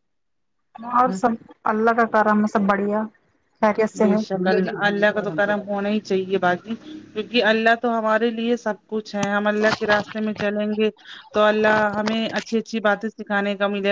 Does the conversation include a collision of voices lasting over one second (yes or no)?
no